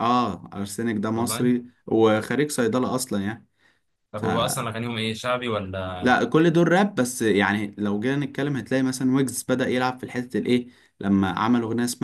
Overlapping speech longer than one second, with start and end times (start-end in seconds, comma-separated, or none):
none